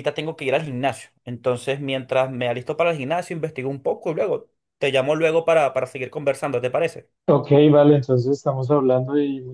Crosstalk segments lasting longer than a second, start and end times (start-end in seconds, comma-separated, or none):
none